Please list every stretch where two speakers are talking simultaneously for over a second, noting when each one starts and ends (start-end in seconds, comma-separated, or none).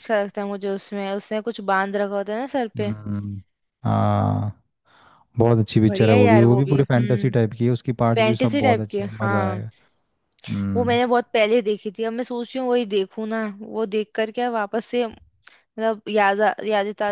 5.8-7.3, 8.1-9.6